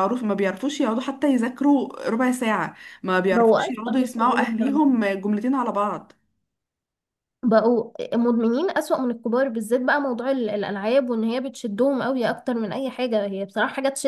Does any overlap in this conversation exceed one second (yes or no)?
yes